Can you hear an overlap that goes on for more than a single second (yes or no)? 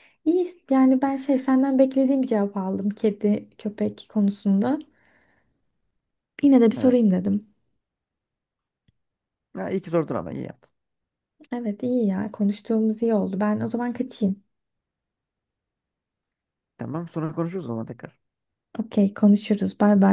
no